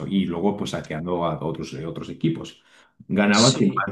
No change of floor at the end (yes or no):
yes